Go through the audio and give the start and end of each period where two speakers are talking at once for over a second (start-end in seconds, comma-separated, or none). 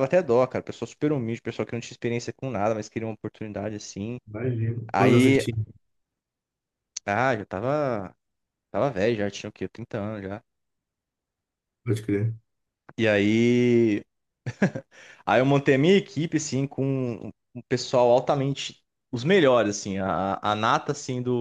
none